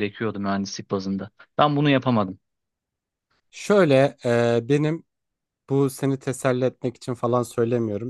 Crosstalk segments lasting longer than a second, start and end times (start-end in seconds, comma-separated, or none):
none